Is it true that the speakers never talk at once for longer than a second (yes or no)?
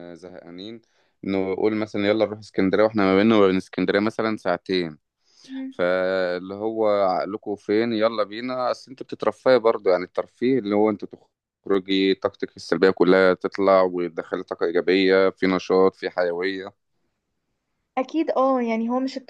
yes